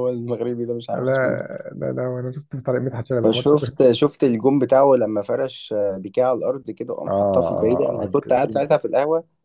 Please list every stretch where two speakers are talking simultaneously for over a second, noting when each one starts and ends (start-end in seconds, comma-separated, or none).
7.1-8.7